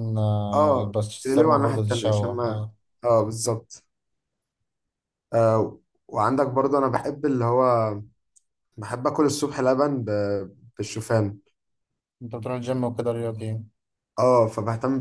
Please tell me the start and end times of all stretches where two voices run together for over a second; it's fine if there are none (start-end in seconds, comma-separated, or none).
0.5-2.6